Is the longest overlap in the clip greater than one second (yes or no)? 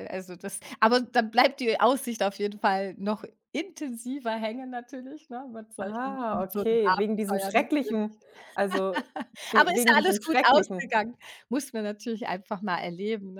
yes